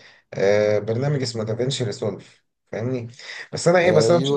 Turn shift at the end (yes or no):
no